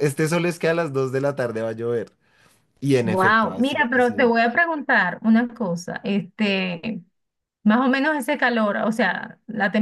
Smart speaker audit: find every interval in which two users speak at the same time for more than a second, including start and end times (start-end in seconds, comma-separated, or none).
3.0-4.3